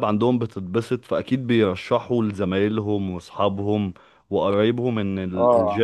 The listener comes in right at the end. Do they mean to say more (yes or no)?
no